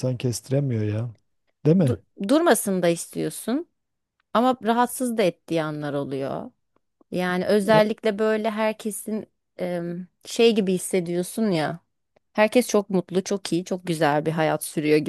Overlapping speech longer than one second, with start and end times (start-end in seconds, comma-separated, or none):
none